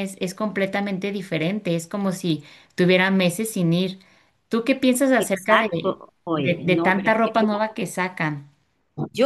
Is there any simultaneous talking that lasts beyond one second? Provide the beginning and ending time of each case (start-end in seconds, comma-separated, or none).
6.3-7.6